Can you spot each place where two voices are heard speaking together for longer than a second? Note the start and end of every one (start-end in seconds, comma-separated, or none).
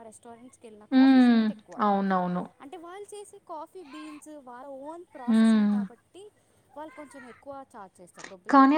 none